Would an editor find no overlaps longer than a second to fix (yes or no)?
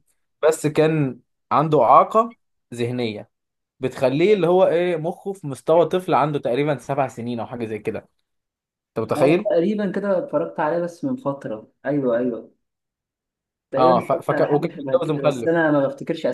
no